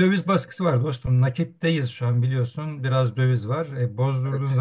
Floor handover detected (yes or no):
no